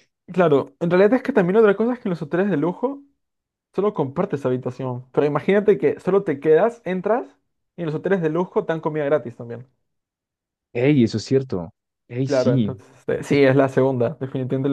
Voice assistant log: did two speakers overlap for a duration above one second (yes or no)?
no